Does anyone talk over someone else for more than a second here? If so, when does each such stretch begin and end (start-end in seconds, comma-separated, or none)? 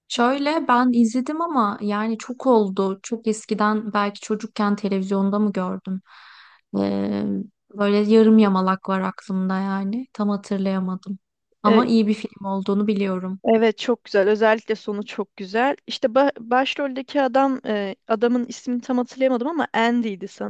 none